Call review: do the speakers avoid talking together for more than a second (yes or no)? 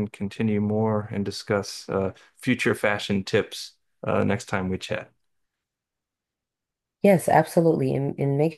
yes